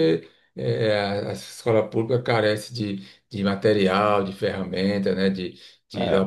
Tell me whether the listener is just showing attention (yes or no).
yes